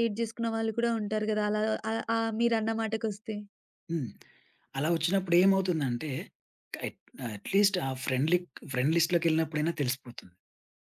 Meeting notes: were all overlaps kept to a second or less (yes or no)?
yes